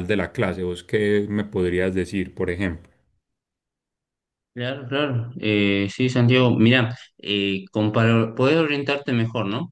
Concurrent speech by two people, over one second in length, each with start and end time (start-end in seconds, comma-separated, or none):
none